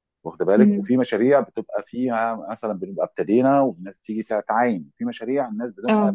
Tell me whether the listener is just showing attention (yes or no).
yes